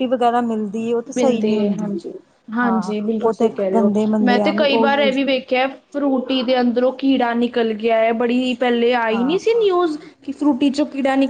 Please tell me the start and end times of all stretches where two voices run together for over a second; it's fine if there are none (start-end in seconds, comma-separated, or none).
2.6-5.2